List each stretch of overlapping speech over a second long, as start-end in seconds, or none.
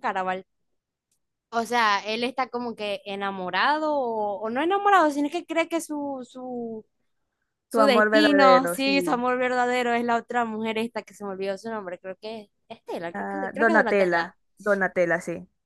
7.7-9.2, 13.1-14.4